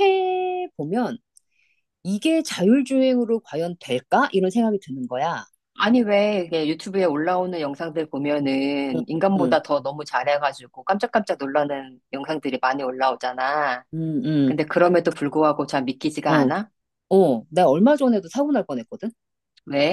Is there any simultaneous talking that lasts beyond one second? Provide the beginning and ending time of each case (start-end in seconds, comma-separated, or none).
none